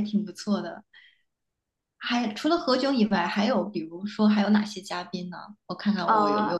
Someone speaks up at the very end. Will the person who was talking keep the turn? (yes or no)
no